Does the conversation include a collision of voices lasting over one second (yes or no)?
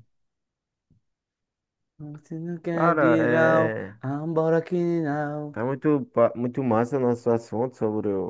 yes